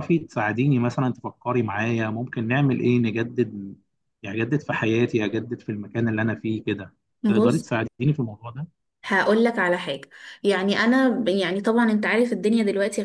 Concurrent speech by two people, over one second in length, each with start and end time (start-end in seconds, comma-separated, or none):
none